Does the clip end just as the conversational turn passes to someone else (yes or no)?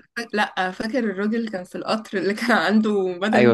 yes